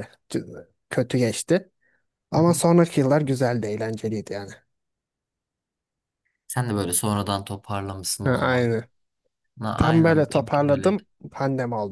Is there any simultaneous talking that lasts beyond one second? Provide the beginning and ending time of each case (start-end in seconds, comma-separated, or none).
9.8-11.0